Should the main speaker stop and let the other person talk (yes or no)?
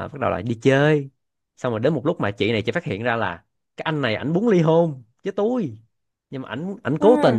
no